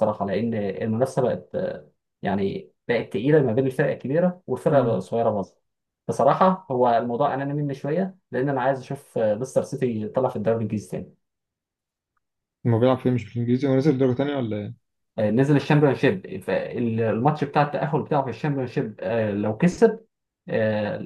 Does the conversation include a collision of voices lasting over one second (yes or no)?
no